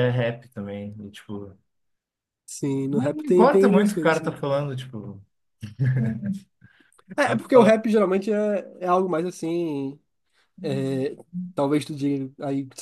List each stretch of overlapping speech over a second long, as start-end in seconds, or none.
2.9-4.4